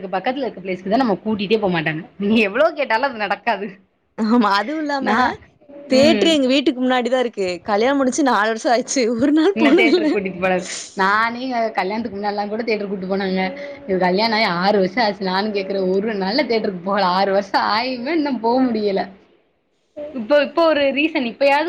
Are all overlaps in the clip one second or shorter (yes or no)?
yes